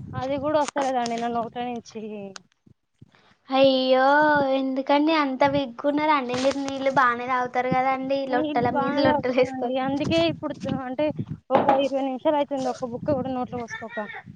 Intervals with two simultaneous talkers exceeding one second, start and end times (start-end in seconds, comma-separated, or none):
8.3-9.8